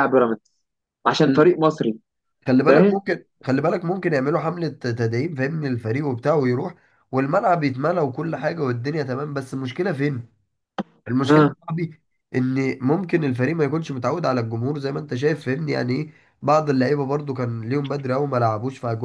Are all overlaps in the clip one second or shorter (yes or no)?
yes